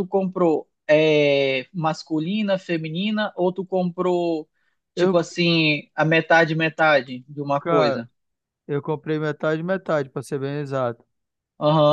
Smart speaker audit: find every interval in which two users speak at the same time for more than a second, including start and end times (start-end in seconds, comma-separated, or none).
none